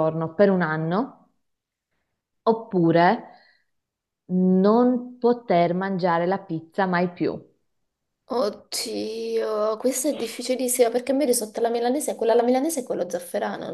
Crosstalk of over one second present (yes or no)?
no